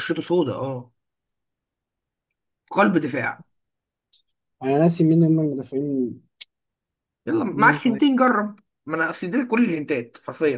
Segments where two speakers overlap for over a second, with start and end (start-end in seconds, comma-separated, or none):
none